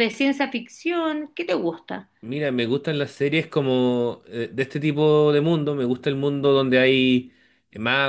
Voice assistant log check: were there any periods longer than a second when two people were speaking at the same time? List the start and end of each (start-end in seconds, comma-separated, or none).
none